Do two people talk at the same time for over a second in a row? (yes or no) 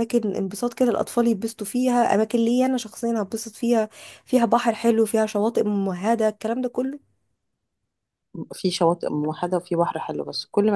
no